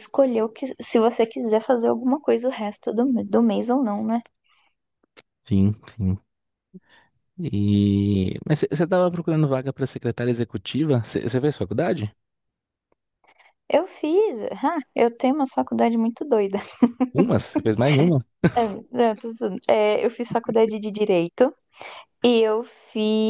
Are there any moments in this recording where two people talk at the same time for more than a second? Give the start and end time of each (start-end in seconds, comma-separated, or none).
none